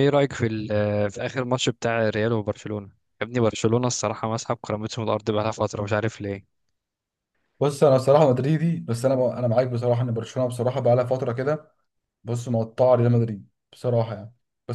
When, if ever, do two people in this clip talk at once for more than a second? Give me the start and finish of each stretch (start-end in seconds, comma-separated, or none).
none